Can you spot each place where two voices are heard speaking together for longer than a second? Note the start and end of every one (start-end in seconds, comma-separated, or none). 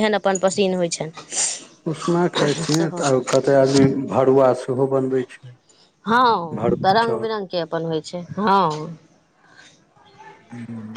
none